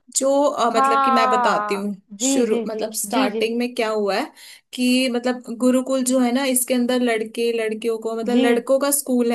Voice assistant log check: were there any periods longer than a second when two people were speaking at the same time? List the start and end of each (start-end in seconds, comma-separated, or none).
0.8-3.5